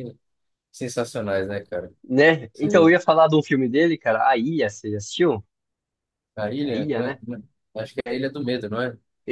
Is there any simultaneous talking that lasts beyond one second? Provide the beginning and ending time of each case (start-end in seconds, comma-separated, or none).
none